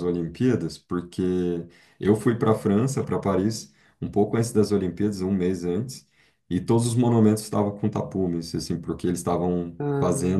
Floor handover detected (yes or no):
no